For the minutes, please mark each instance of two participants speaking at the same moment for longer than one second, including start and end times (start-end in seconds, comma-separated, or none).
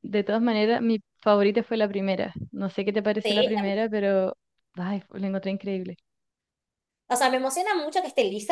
none